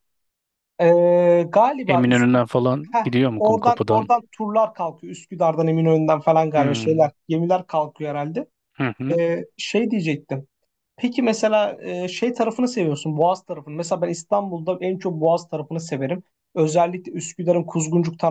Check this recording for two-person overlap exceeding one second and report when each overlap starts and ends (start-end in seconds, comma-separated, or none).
1.9-4.1